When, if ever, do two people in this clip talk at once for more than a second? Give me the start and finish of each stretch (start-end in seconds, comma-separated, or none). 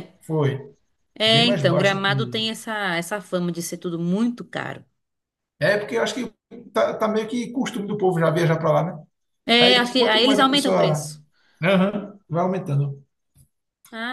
1.2-2.5, 9.6-11.1